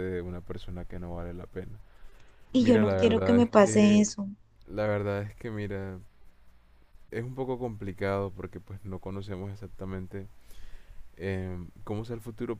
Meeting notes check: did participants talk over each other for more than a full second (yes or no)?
yes